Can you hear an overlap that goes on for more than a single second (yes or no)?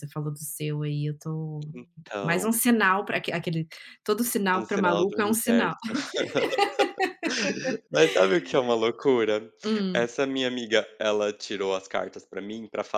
yes